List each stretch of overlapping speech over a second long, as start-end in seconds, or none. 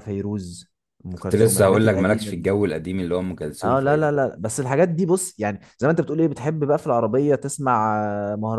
1.2-2.5